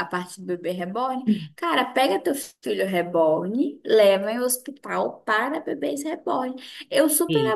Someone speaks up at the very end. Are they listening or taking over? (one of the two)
listening